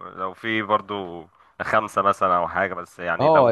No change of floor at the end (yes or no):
no